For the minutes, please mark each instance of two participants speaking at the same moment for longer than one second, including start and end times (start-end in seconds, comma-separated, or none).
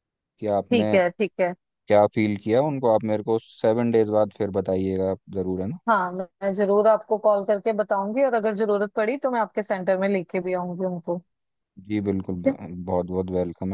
none